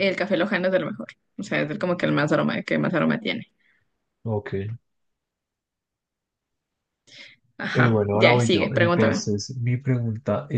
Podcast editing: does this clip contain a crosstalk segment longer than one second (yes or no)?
yes